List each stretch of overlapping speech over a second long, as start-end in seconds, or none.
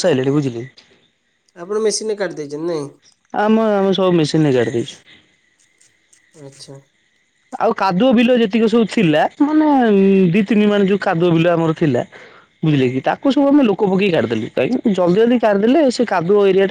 none